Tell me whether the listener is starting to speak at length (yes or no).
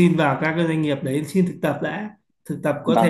no